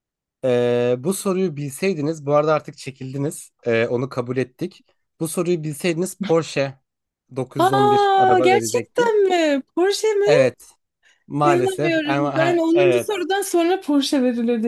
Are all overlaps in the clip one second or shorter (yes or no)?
no